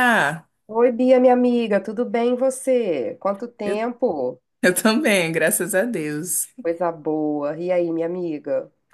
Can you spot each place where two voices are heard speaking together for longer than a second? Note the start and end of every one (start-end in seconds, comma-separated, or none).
none